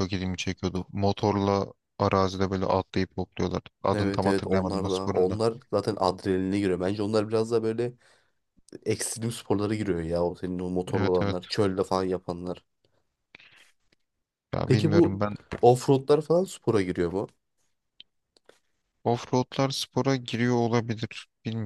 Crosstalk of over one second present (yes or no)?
yes